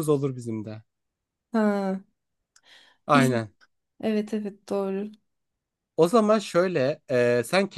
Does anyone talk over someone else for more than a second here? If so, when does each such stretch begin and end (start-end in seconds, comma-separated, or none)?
none